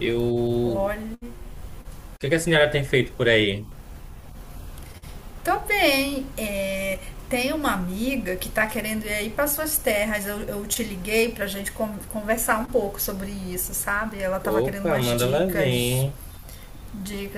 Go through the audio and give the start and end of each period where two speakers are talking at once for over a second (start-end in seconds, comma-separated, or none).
14.5-16.1